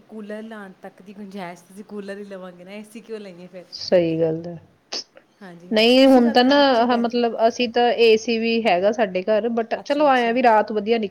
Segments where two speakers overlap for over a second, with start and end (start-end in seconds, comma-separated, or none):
5.7-7.1